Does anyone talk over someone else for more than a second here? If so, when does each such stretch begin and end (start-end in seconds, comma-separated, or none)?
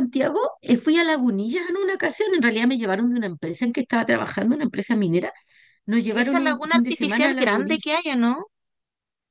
6.2-7.9